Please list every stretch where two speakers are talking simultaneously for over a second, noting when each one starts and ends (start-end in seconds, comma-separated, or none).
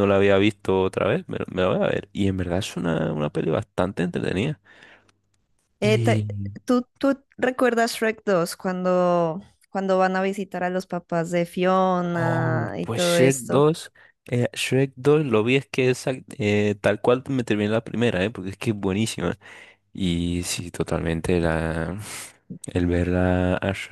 12.1-13.6